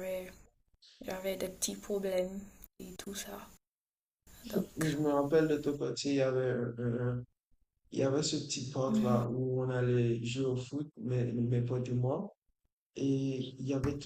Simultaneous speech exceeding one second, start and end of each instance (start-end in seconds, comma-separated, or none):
none